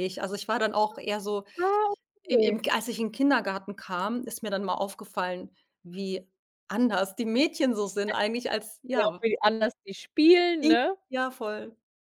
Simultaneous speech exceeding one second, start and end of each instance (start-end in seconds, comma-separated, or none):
none